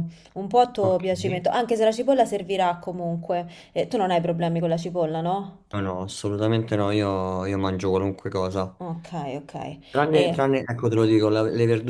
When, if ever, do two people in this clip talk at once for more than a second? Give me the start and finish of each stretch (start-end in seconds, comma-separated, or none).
none